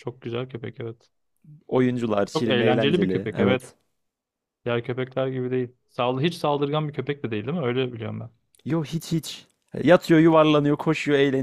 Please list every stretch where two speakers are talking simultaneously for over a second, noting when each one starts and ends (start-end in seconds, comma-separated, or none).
2.3-3.7